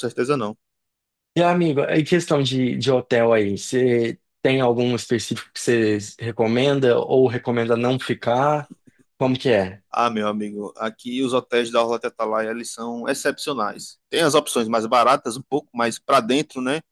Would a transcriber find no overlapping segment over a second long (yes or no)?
yes